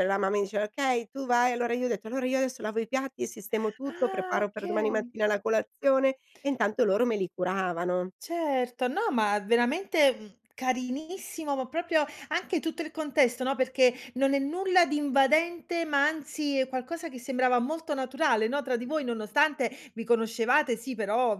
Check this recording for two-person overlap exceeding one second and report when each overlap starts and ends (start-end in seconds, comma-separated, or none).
3.9-5.1